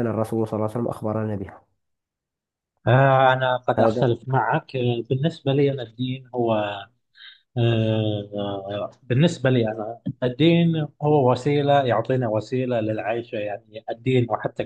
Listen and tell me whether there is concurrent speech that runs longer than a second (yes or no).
no